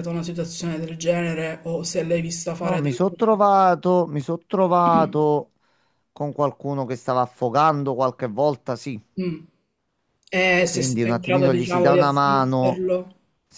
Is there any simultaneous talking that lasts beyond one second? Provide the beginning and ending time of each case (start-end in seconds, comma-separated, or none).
10.7-12.8